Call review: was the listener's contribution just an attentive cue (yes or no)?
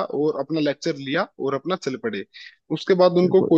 yes